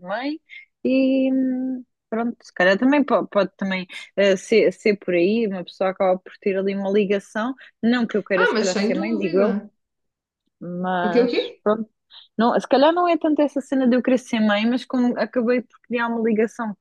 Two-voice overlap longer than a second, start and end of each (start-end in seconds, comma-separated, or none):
8.3-9.6